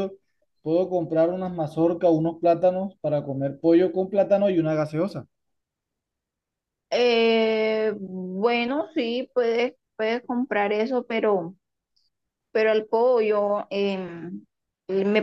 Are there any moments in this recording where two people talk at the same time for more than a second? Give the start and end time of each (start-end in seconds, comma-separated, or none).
none